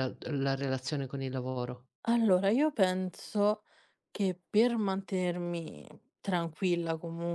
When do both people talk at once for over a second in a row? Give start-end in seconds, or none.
none